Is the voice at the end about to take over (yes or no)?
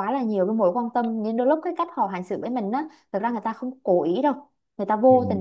no